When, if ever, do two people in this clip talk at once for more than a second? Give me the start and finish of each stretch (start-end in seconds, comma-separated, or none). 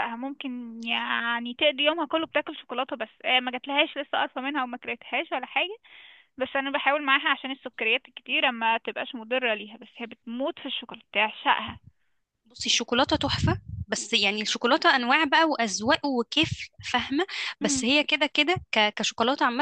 none